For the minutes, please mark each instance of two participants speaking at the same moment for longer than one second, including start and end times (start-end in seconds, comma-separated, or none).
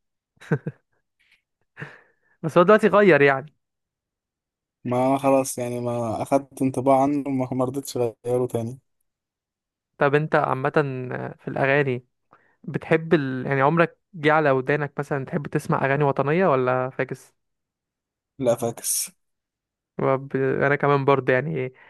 none